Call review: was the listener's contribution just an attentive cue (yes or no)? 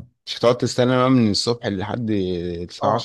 yes